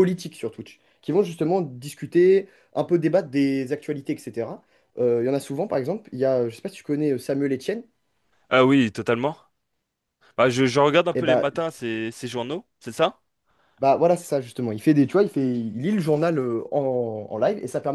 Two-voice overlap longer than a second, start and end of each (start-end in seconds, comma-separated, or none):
none